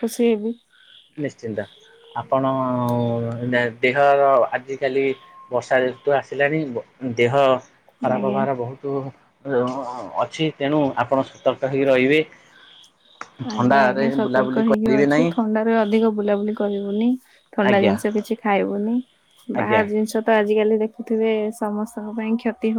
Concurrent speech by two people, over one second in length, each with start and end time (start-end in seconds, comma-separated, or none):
13.5-15.3